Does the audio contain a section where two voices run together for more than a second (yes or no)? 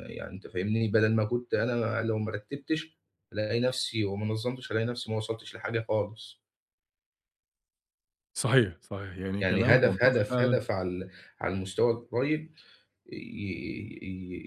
yes